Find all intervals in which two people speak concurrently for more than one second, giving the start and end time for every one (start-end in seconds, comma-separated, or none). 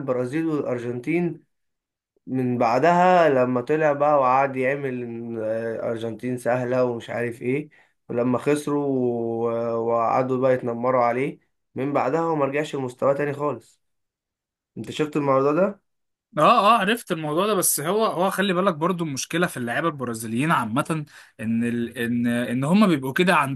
none